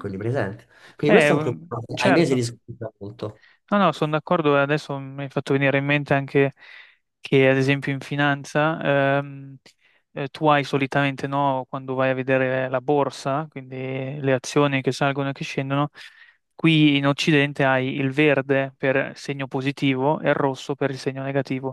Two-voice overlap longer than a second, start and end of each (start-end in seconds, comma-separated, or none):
1.1-2.4